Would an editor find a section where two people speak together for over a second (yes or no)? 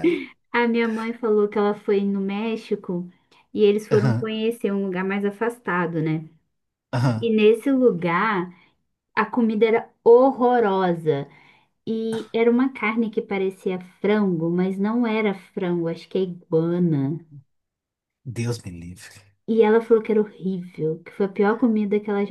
no